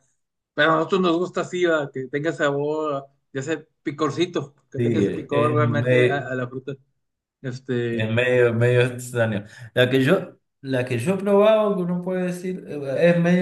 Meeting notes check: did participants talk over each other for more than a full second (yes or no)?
yes